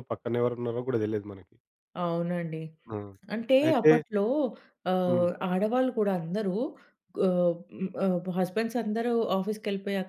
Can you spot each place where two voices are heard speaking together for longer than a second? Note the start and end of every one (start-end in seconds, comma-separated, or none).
none